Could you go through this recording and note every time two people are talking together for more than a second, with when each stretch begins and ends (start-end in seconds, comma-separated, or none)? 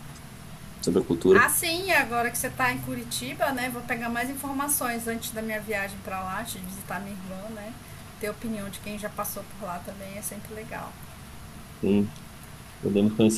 none